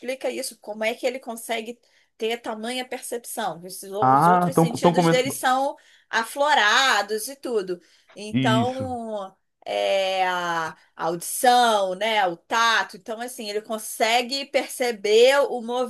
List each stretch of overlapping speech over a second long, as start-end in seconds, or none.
4.0-5.4